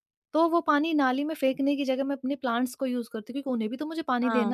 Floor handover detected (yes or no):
yes